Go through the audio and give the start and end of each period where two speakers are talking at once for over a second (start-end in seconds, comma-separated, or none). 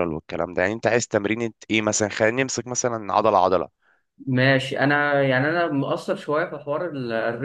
none